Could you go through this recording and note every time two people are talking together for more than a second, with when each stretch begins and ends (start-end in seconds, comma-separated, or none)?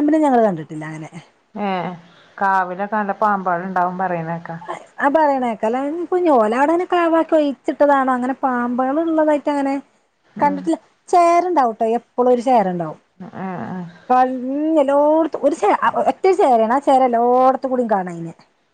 none